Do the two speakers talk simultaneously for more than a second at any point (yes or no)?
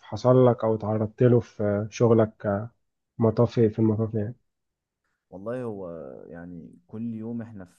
no